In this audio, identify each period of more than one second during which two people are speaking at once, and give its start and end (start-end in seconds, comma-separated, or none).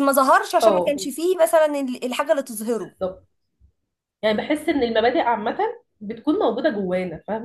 none